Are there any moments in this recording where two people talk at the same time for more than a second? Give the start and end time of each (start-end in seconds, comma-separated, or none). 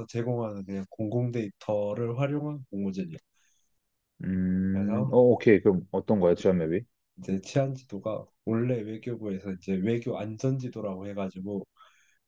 none